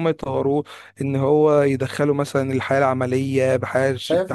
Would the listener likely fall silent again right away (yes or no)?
no